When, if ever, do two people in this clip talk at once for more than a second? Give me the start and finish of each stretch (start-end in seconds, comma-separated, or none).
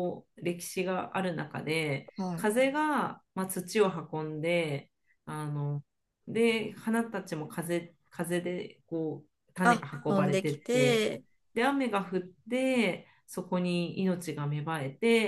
9.6-11.1